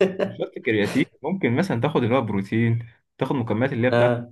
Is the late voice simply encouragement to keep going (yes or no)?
yes